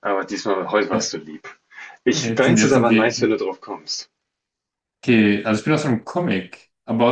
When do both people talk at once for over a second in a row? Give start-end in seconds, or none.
2.1-3.4